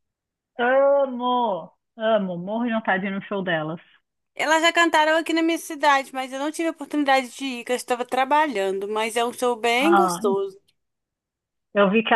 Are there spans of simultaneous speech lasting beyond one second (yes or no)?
no